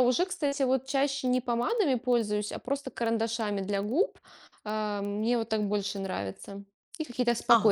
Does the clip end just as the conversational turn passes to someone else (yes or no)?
yes